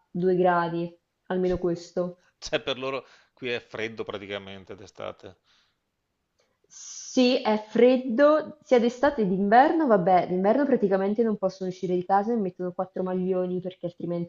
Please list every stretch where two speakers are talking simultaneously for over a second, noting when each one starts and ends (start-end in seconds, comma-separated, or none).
none